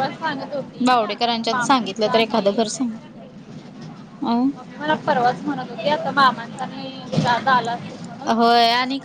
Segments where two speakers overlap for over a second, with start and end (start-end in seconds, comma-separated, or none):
0.8-2.9